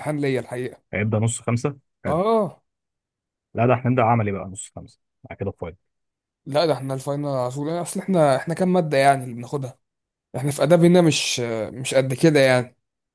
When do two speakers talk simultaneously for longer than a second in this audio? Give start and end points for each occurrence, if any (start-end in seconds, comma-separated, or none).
none